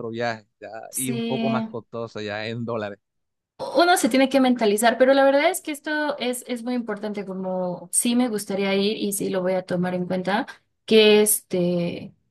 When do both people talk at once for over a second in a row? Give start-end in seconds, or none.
none